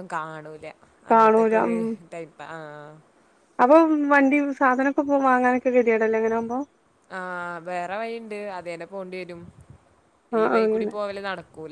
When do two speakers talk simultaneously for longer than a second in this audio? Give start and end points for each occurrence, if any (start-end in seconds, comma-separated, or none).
none